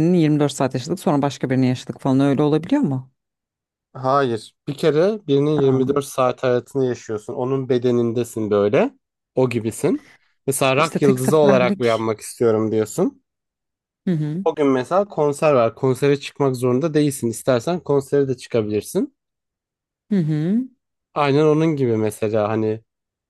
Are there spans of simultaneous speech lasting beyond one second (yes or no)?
yes